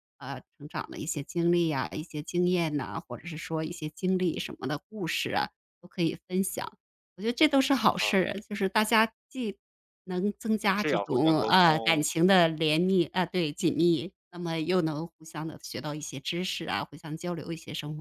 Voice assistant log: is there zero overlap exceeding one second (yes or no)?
no